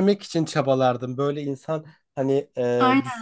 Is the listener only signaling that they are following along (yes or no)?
yes